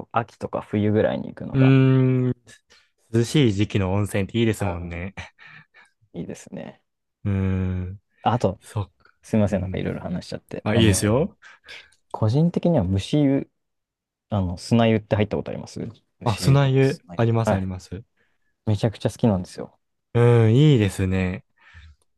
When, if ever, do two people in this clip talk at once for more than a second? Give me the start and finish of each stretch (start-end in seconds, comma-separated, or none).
16.2-17.7